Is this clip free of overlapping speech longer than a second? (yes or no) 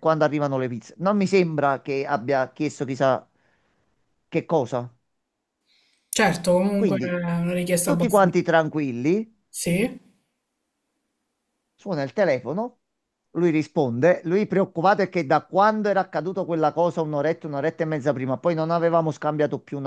yes